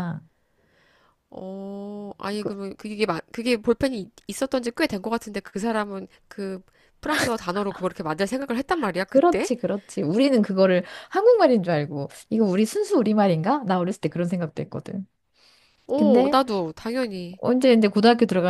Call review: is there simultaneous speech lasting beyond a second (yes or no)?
no